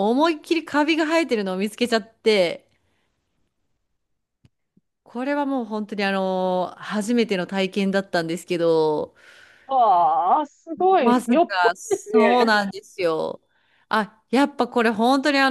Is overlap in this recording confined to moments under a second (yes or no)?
no